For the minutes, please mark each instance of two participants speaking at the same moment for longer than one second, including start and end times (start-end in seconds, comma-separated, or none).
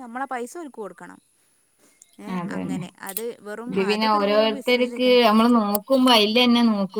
3.7-5.2